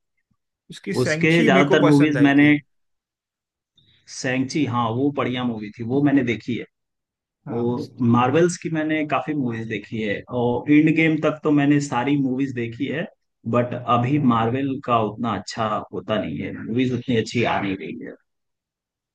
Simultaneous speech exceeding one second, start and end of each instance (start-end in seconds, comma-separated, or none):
1.0-2.5